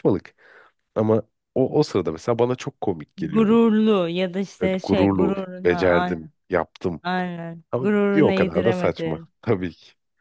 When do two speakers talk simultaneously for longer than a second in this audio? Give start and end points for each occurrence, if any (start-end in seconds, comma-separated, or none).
4.6-6.3, 7.7-9.3